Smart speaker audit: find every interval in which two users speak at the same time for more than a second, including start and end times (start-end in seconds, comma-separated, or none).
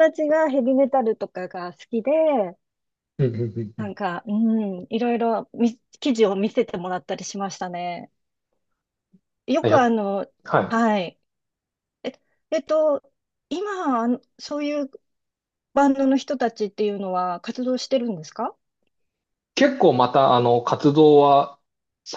none